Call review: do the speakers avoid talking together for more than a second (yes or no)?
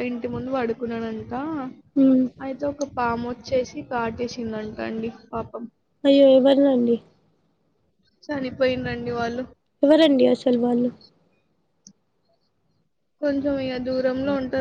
yes